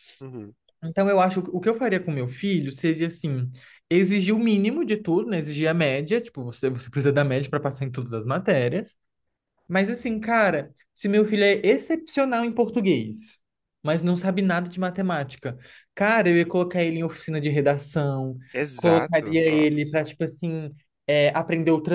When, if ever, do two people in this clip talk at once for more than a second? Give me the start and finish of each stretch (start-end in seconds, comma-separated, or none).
18.7-20.0